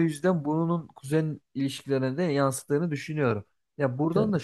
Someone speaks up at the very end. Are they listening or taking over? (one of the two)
listening